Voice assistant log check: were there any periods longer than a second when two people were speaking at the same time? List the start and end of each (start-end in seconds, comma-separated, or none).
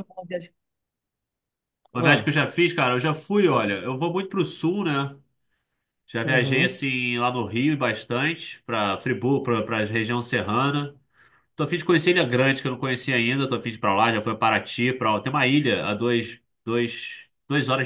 none